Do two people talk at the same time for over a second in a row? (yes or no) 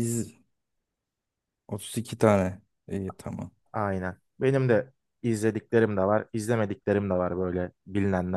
no